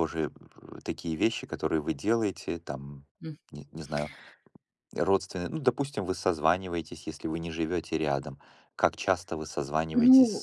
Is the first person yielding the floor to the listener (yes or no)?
yes